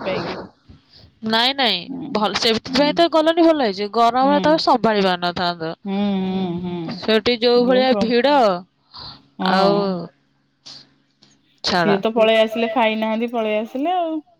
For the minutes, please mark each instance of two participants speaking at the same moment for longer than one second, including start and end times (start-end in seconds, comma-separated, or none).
none